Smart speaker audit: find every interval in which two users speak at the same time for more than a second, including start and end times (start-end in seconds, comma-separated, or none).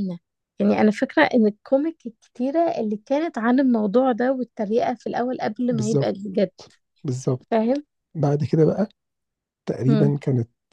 none